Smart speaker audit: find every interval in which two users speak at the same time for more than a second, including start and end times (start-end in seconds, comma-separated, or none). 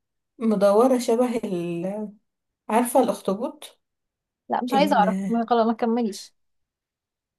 none